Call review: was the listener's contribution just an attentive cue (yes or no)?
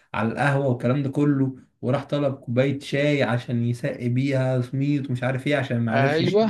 yes